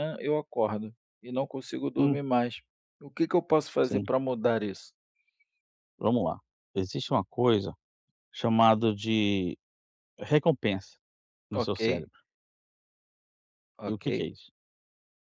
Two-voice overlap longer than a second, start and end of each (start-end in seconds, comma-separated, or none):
none